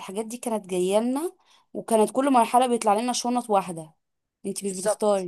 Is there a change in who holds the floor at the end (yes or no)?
yes